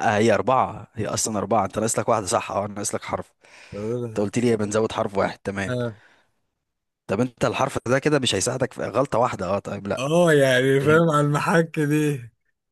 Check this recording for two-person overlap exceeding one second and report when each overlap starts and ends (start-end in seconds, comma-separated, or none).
none